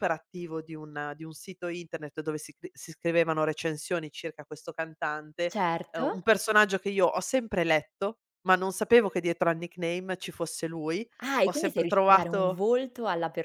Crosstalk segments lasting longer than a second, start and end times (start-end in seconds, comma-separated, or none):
11.4-12.6